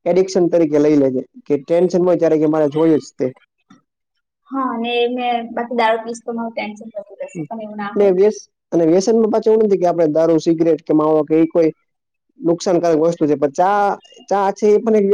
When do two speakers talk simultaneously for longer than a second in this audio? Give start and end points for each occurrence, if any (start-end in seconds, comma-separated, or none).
none